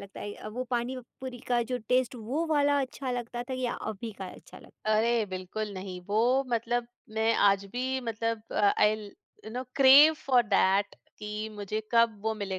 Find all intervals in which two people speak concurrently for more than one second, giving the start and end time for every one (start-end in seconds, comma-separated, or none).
none